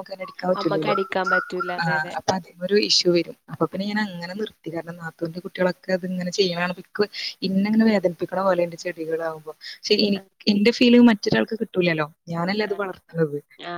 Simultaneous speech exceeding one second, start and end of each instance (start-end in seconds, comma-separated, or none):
none